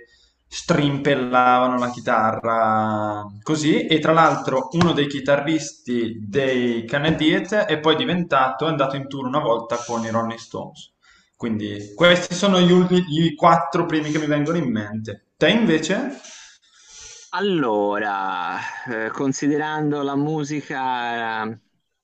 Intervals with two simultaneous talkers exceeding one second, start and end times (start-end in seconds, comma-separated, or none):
none